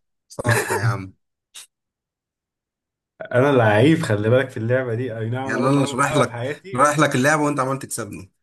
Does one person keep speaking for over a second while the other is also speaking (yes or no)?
yes